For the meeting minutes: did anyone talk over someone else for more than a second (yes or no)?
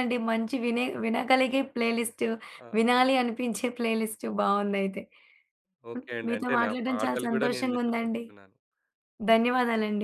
yes